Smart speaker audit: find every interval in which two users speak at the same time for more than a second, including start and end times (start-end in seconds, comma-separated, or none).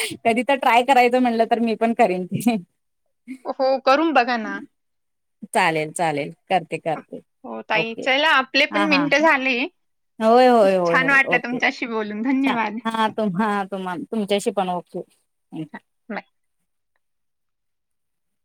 10.9-12.8